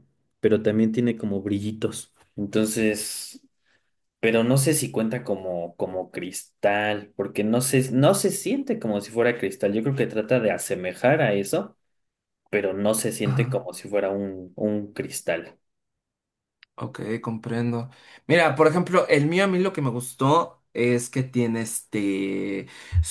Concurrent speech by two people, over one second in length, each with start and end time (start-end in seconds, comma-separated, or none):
none